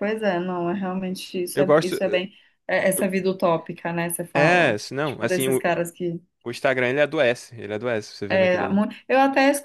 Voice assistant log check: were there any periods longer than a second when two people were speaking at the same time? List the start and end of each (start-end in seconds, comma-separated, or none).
4.3-5.6